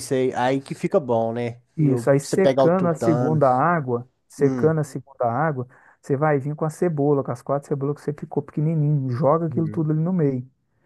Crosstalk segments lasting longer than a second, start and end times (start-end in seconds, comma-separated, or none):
1.8-3.4